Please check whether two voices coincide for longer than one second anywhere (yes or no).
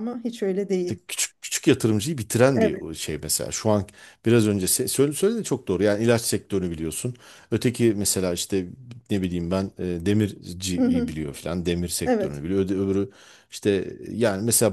no